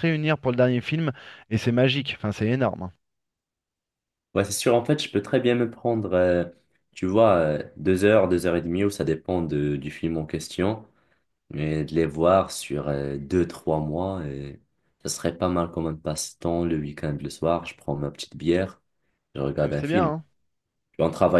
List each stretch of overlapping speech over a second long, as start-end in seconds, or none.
none